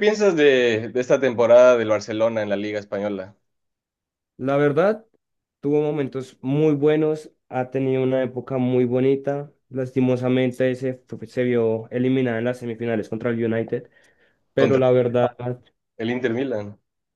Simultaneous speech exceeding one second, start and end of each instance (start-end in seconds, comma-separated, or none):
none